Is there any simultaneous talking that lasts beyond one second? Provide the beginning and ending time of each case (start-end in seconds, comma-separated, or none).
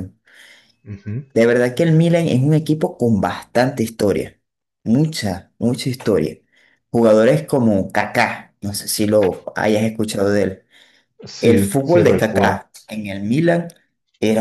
11.4-12.6